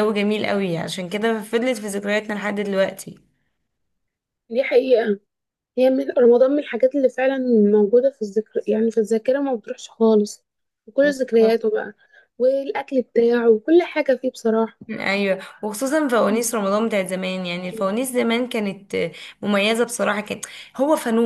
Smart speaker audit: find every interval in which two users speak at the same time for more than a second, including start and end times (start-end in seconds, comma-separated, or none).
none